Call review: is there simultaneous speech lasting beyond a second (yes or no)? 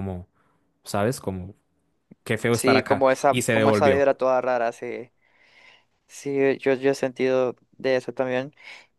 yes